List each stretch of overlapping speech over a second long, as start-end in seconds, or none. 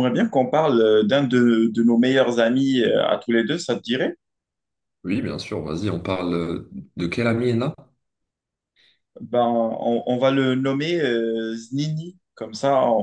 none